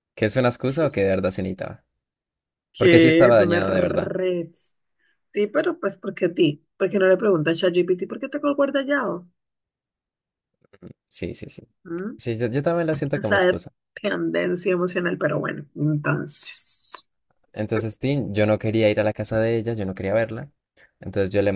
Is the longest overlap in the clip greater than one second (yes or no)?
yes